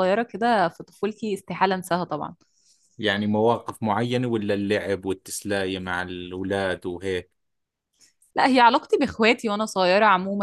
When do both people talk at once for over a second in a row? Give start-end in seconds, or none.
none